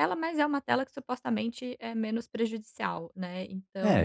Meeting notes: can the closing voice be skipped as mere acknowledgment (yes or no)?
no